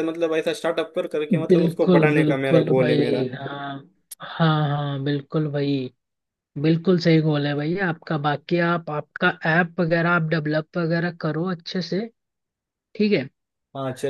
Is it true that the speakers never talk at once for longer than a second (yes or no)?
no